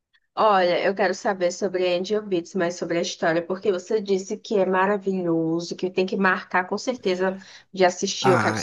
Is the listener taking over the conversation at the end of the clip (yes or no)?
yes